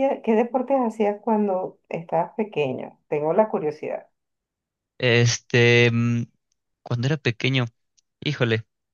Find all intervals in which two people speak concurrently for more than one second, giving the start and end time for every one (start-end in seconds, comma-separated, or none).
none